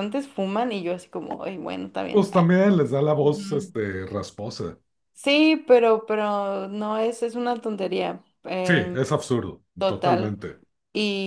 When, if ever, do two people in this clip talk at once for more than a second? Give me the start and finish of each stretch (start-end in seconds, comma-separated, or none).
none